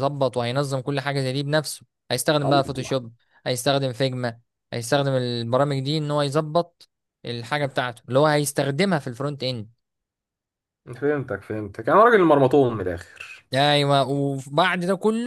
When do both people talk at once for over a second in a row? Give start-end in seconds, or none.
none